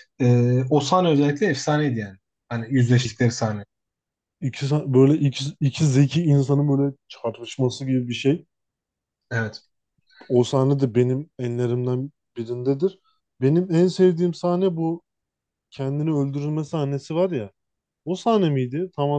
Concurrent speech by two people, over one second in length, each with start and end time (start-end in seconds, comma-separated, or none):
none